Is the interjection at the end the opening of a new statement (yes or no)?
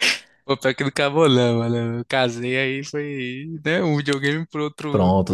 yes